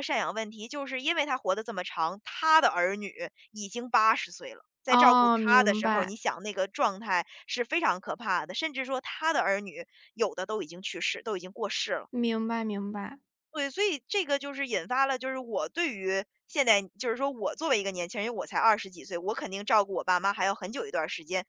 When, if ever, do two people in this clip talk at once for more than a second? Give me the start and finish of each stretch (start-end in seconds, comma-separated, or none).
4.8-6.1